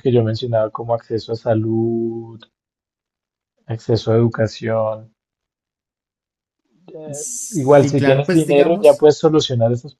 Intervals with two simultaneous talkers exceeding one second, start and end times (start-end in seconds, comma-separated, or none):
7.1-9.1